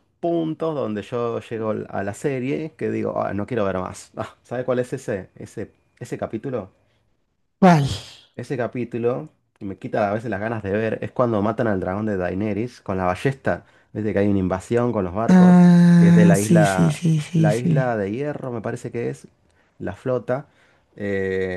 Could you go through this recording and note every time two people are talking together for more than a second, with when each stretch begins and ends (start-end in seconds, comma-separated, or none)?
15.3-17.8